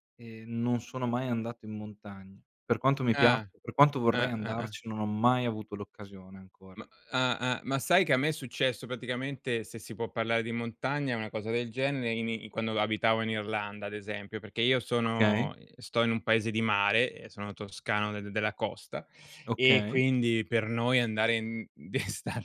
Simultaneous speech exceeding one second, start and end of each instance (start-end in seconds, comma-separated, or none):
none